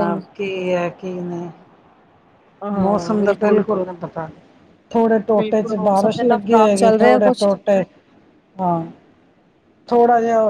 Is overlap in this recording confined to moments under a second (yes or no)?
no